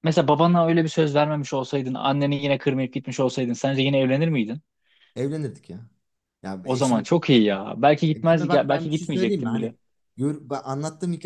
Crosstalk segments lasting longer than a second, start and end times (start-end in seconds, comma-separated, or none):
8.1-9.7